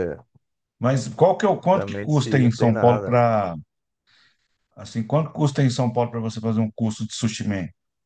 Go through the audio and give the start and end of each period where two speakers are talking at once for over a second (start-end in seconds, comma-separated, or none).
1.7-3.2